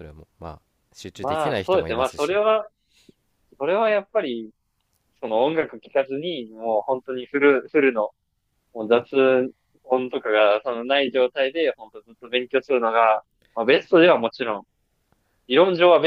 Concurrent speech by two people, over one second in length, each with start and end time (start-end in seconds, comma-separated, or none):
1.2-2.4